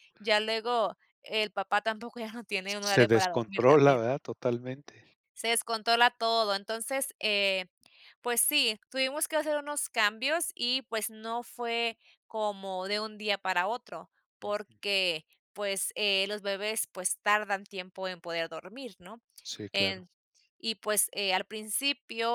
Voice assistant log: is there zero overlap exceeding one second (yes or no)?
no